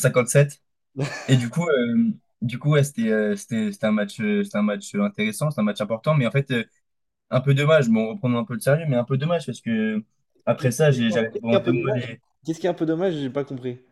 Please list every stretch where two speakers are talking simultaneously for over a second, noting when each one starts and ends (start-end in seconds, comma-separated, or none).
10.6-12.0